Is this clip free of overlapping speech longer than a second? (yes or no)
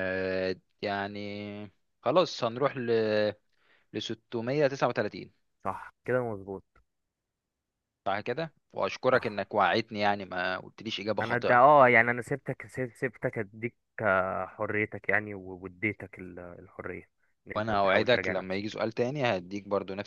no